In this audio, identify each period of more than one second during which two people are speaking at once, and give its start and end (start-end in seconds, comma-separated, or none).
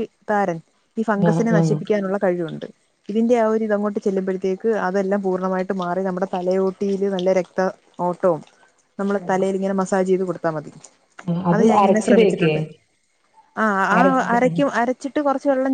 none